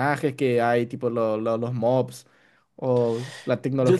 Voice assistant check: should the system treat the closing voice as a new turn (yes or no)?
no